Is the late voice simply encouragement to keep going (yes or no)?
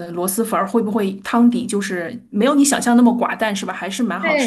no